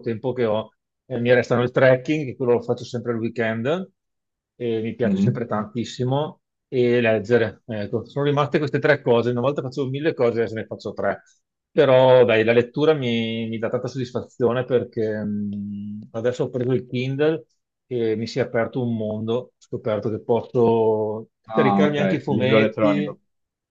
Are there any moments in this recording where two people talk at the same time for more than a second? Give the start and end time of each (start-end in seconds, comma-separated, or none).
21.5-23.2